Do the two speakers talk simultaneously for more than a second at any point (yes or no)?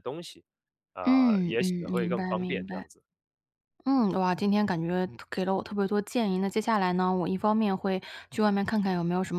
yes